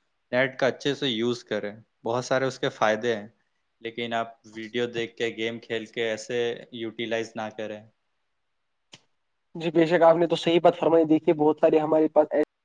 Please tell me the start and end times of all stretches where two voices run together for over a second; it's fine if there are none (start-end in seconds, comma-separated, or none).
none